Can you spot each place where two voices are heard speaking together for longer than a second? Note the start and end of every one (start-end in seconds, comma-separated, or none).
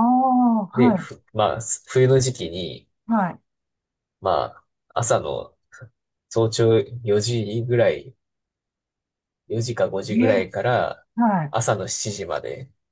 none